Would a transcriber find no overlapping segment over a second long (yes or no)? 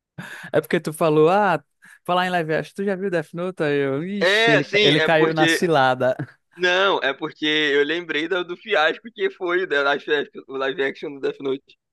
no